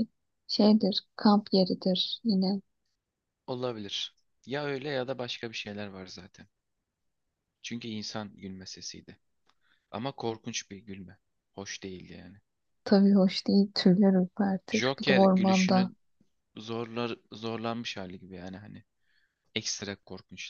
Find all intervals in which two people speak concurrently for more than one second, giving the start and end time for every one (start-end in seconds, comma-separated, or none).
14.7-15.9